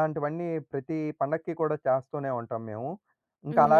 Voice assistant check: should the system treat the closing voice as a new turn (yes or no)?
yes